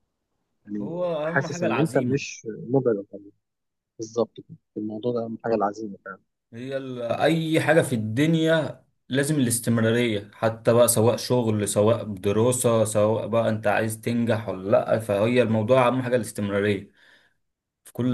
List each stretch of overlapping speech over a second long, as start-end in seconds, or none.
0.8-2.2